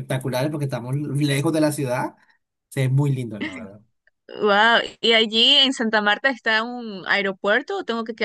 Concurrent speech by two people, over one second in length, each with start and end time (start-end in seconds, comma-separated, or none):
none